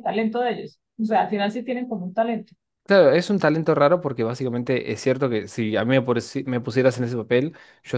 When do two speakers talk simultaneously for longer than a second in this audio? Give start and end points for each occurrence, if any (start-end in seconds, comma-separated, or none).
none